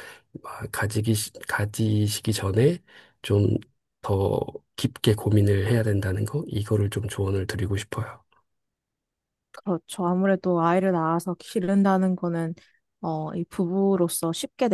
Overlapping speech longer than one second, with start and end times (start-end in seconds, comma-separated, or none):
none